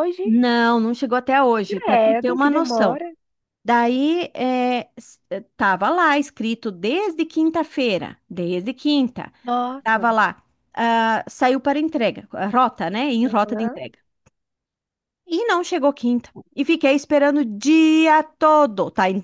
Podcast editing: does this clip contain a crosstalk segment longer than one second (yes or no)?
yes